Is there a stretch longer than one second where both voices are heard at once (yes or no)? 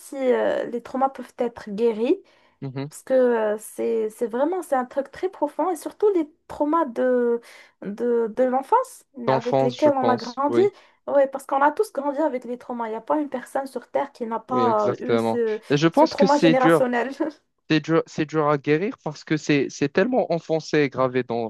yes